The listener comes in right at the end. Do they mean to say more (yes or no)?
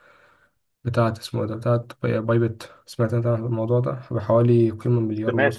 yes